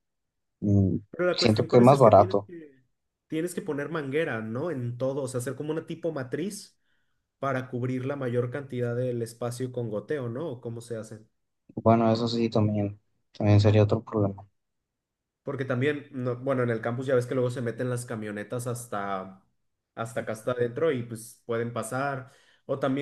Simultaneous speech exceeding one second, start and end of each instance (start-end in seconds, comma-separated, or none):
1.1-2.5